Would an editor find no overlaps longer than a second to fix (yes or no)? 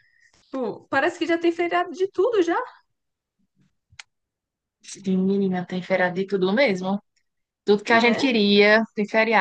yes